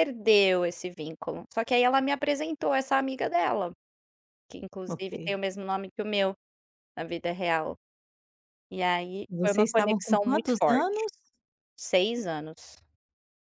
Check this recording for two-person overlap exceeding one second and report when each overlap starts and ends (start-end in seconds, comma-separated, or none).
9.3-11.1